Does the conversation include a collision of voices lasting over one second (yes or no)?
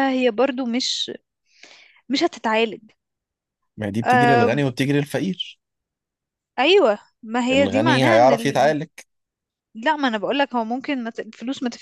yes